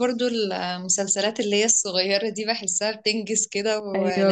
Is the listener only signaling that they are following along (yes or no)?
no